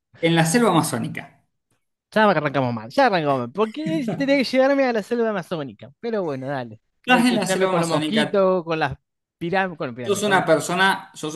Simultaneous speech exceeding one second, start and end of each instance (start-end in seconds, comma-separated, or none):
7.0-8.5